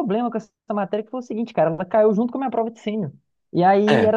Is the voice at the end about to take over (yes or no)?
no